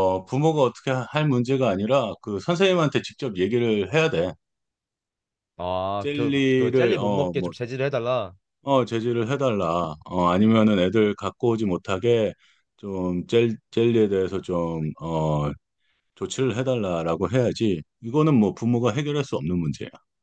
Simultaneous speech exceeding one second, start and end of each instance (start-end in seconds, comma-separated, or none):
6.0-7.5